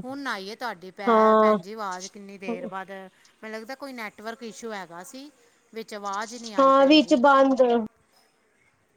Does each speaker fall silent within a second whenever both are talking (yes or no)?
yes